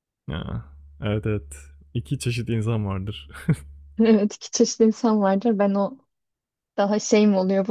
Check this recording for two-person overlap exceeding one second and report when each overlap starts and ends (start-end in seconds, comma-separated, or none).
none